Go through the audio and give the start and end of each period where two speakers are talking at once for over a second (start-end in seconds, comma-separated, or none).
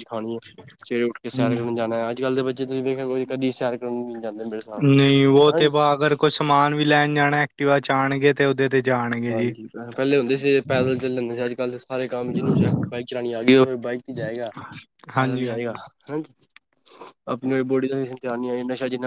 none